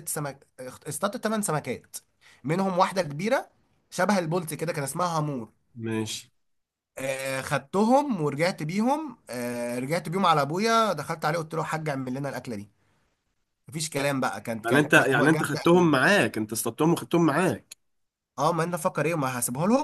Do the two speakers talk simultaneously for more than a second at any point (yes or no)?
yes